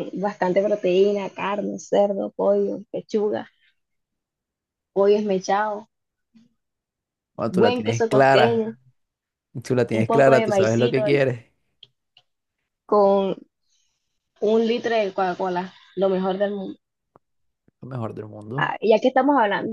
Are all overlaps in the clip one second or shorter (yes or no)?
no